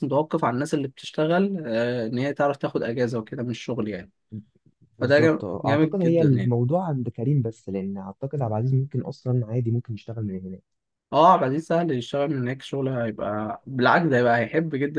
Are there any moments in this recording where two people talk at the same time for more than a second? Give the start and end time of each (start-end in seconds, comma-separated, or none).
5.0-6.5